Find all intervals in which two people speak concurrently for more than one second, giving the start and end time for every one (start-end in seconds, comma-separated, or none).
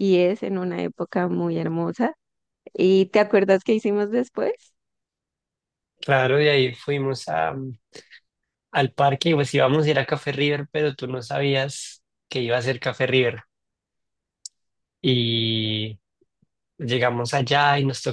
none